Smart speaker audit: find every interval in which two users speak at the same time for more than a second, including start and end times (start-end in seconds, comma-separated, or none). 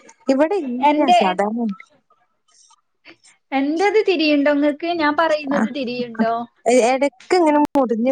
none